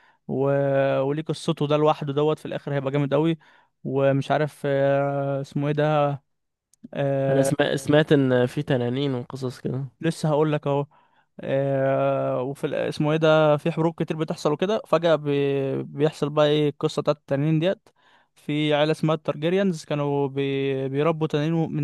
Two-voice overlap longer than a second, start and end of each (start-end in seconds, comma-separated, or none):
none